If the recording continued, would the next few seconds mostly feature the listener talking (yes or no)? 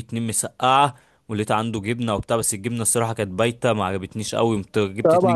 yes